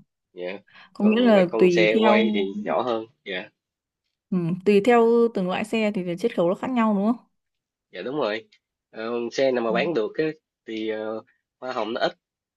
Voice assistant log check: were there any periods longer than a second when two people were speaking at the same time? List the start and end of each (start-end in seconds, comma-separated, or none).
1.0-2.4